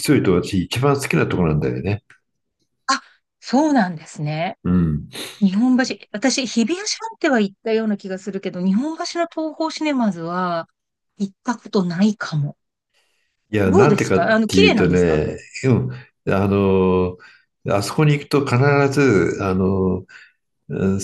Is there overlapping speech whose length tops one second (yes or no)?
yes